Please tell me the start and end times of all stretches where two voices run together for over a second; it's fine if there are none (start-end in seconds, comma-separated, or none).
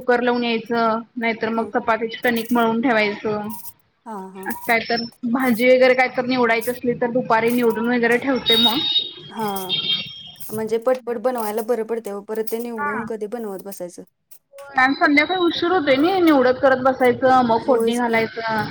none